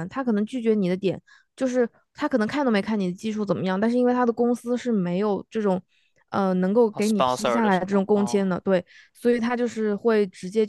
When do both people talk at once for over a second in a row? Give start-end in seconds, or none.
6.9-8.4